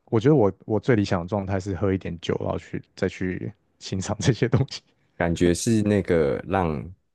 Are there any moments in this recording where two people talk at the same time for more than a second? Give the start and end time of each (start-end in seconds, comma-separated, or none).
none